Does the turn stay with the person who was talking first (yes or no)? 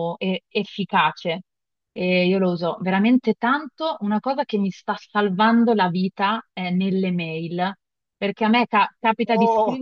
yes